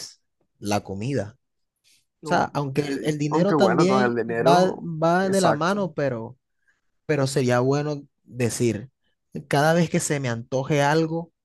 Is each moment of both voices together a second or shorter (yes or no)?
no